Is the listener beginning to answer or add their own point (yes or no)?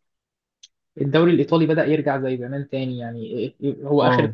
no